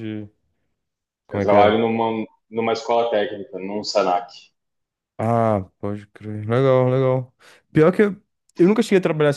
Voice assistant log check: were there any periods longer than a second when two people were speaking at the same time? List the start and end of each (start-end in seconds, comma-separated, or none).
none